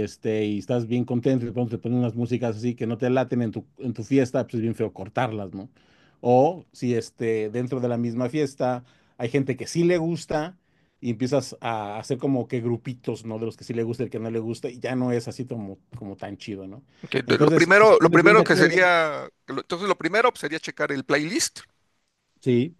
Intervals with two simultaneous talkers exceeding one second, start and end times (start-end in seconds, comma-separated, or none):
17.2-18.8